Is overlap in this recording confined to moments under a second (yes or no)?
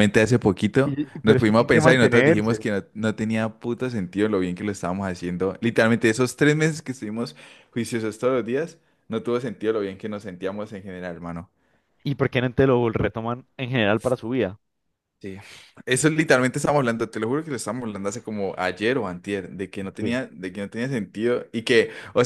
no